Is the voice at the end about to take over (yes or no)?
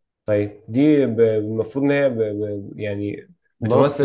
no